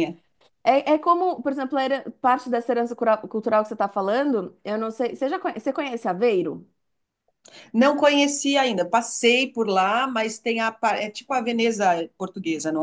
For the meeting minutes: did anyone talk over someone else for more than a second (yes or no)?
no